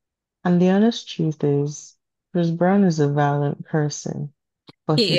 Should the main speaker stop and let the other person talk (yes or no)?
no